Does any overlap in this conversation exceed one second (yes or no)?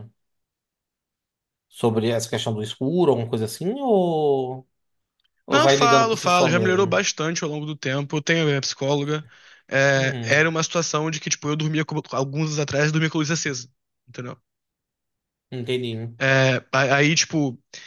yes